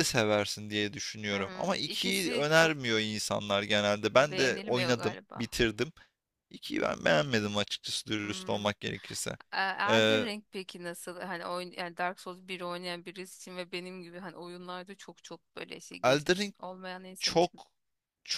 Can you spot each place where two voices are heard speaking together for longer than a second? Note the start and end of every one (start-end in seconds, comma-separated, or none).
1.3-2.7, 4.2-5.5